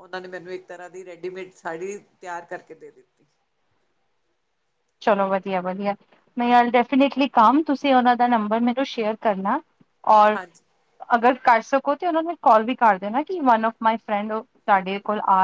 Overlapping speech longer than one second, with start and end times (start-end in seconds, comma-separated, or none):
none